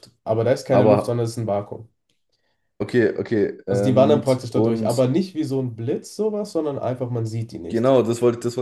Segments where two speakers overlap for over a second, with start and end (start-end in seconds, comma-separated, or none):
3.7-5.0